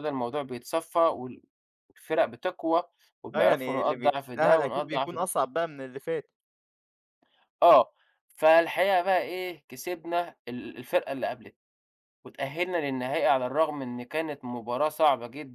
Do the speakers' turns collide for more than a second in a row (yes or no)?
yes